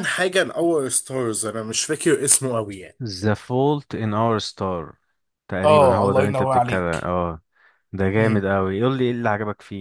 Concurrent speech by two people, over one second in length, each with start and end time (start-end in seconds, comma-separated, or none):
5.6-7.1